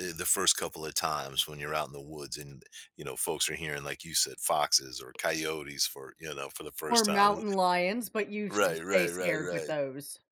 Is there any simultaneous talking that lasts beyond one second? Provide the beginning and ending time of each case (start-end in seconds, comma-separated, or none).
8.5-9.7